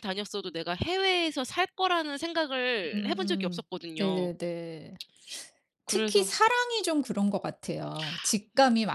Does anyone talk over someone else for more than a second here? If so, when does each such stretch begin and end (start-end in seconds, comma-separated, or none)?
2.9-4.3